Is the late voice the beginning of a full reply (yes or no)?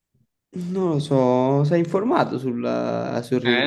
yes